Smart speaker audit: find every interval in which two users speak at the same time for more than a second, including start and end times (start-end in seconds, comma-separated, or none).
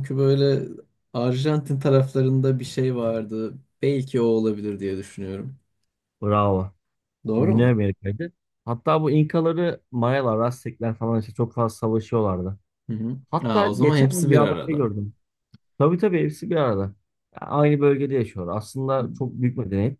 13.3-14.8